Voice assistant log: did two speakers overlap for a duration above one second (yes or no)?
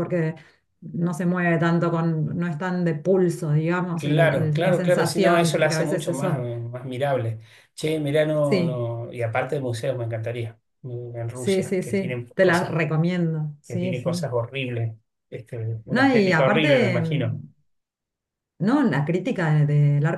yes